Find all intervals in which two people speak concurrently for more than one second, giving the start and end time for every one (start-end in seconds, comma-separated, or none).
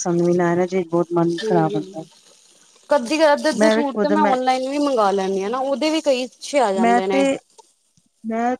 none